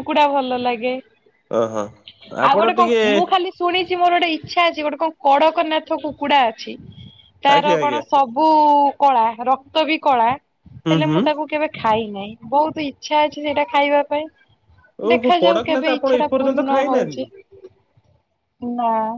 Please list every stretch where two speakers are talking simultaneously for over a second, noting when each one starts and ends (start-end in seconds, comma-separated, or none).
15.1-17.2